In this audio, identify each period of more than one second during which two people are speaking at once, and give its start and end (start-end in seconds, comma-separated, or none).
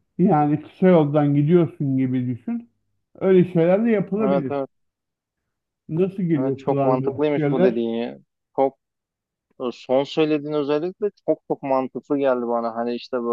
6.4-7.8